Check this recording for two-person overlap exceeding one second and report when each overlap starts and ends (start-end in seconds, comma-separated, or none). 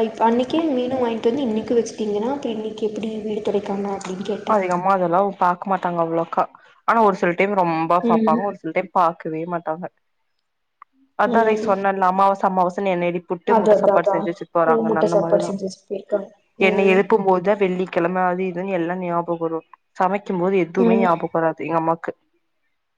none